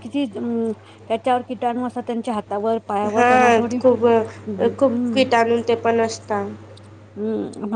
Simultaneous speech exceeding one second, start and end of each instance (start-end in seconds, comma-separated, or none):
none